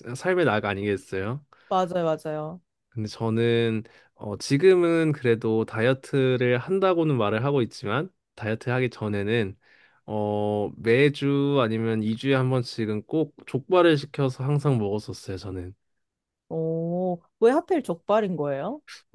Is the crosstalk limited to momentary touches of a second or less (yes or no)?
yes